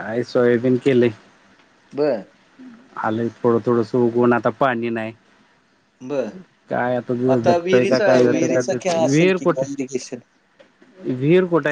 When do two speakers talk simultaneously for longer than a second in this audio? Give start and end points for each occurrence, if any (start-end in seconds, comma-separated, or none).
7.6-9.7